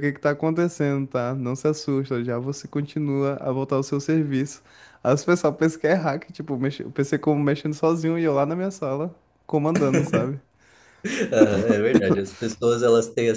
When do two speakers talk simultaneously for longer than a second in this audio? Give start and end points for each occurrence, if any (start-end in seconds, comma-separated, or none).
none